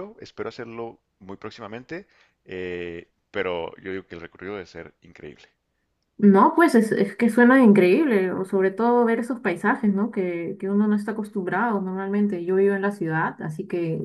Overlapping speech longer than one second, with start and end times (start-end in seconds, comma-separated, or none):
none